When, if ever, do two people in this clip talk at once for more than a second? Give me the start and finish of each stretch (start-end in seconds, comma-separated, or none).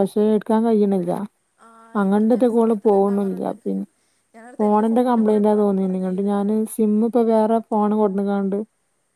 2.0-3.5, 4.6-6.6